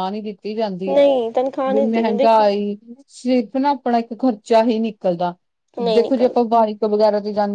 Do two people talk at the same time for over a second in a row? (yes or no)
yes